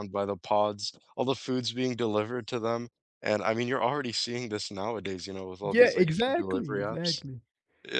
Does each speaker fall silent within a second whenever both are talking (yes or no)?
no